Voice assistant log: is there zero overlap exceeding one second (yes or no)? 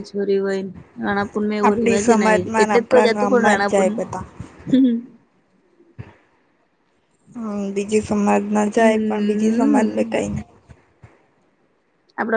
no